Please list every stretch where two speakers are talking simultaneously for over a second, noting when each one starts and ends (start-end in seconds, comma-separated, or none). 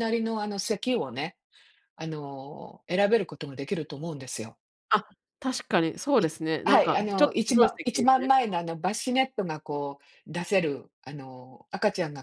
6.2-8.3